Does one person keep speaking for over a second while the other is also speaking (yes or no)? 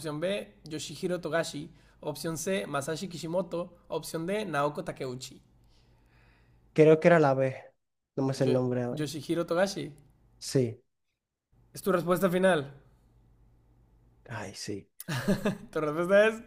no